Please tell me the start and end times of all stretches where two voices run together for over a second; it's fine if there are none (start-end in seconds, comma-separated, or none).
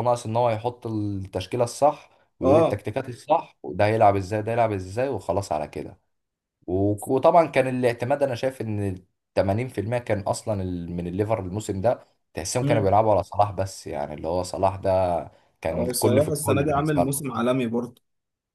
15.7-17.2